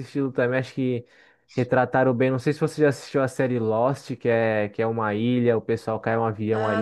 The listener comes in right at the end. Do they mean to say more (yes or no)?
yes